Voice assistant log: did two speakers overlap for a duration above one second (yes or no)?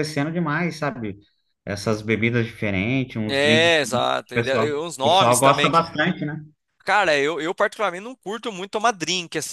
yes